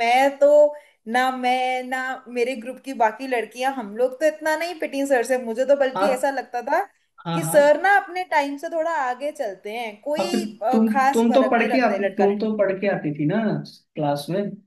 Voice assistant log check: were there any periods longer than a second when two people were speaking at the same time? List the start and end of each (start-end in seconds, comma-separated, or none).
10.2-12.5